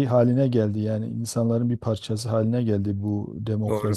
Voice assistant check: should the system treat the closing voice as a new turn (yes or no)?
no